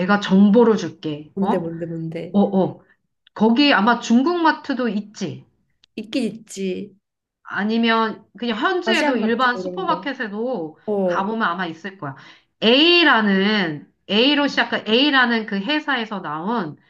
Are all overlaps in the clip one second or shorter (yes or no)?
no